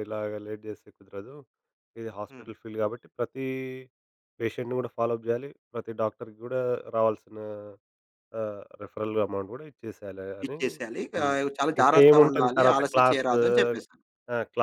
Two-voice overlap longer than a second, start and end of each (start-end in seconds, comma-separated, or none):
11.8-13.4